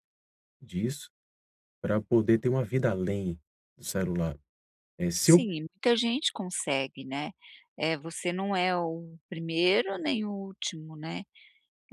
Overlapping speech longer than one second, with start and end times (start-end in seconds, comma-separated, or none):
none